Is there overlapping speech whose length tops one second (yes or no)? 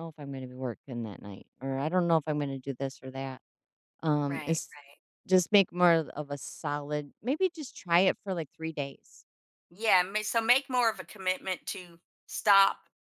no